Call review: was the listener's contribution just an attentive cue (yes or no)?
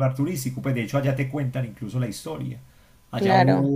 yes